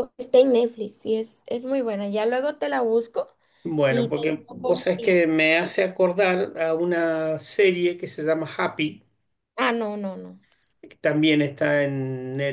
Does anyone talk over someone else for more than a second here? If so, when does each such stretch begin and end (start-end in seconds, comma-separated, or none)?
3.9-5.2